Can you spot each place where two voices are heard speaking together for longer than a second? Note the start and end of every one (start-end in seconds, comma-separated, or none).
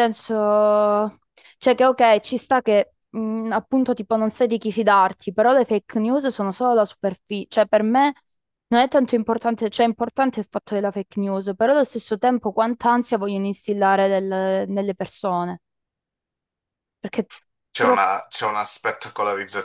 none